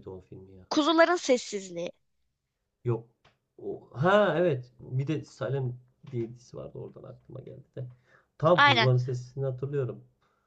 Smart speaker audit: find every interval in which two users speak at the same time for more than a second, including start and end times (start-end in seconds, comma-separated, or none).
none